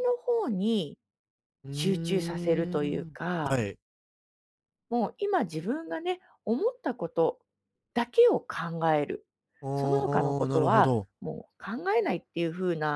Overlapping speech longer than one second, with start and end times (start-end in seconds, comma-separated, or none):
1.7-3.6, 9.7-11.1